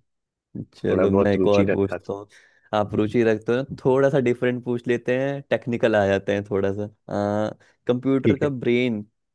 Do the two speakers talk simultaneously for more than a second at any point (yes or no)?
yes